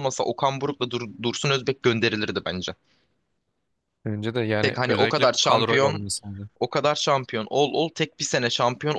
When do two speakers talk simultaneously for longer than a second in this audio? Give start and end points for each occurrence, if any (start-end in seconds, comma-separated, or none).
4.6-6.0